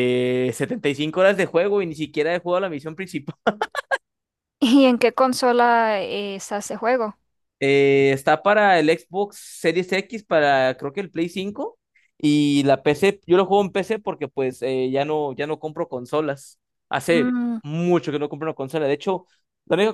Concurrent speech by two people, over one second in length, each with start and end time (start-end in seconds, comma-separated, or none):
none